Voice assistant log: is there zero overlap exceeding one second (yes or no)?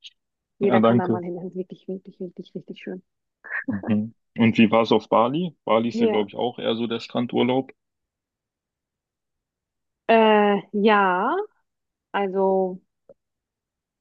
yes